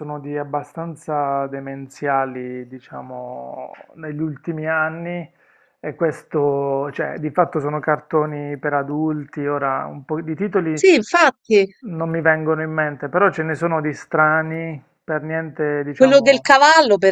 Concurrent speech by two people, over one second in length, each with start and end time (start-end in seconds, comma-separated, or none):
none